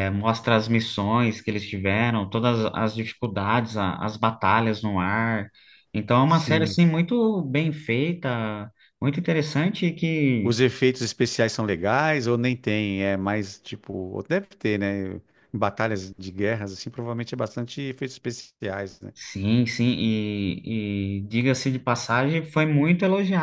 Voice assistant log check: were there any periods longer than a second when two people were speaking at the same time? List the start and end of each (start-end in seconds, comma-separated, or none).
none